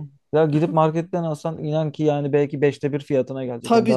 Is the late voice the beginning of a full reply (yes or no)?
no